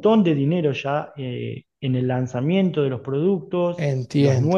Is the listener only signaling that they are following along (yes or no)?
yes